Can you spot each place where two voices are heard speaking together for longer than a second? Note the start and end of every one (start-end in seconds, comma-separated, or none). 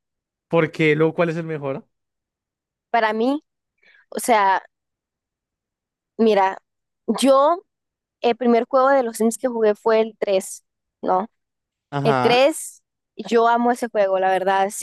none